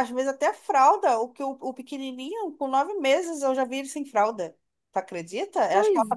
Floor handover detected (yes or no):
no